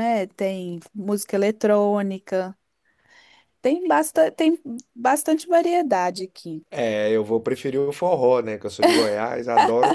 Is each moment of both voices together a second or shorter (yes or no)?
yes